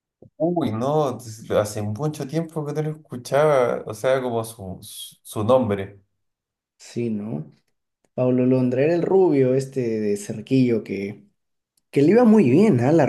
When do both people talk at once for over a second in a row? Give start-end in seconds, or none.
none